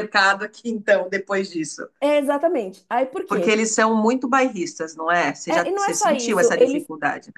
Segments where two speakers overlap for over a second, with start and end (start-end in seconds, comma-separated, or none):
5.5-6.9